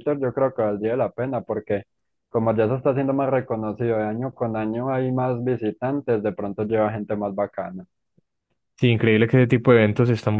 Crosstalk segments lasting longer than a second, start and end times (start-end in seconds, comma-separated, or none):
none